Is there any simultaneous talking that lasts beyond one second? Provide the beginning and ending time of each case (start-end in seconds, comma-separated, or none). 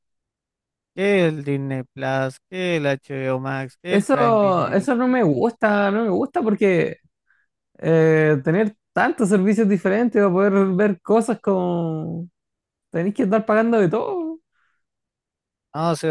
3.9-5.4